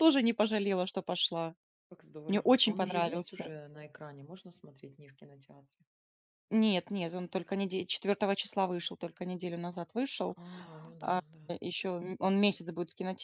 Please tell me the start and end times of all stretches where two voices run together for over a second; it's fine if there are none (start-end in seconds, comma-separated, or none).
2.3-3.5